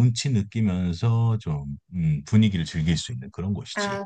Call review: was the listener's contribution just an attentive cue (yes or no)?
no